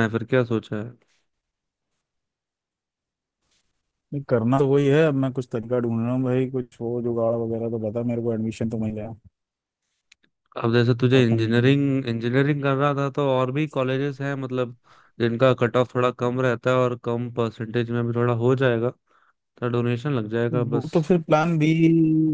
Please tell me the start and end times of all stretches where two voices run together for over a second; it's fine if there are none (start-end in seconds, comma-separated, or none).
none